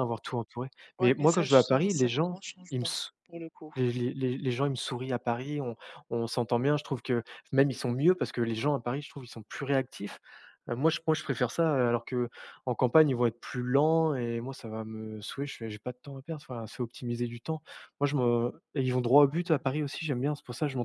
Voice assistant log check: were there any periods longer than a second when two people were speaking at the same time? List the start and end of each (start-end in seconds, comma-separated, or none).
1.0-3.1